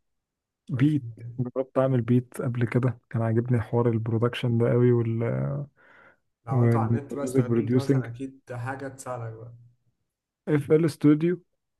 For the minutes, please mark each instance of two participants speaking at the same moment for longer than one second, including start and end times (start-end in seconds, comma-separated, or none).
6.5-8.1